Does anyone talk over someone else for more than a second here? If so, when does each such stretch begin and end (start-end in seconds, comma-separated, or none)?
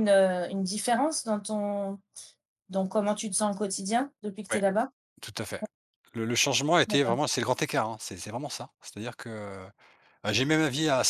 none